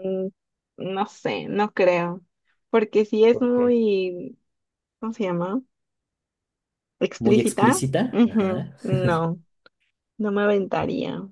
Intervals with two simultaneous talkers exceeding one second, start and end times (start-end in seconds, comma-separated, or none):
7.2-8.8